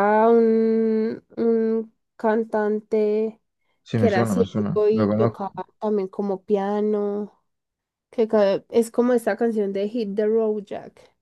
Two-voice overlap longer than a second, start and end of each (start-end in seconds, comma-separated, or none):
4.0-5.5